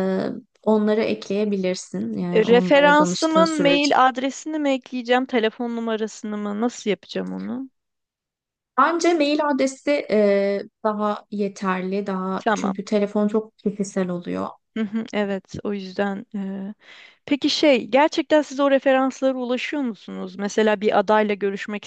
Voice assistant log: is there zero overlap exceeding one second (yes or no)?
no